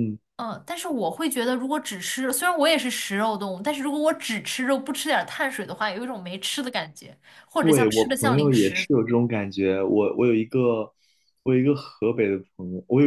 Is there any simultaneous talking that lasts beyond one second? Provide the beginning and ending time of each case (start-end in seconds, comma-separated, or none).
7.6-8.9